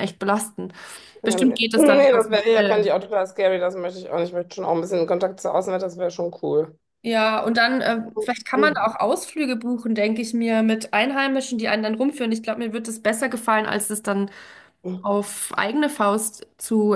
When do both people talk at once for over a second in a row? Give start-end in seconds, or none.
1.2-2.9